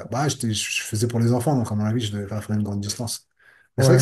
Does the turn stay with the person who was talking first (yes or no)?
no